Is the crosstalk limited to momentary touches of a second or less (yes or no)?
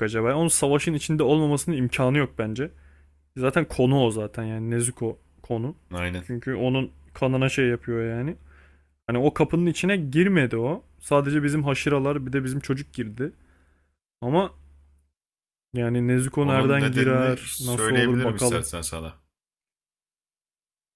no